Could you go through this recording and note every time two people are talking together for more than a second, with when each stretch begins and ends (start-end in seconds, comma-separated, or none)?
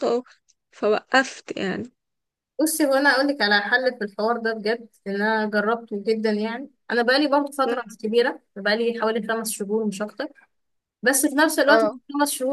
none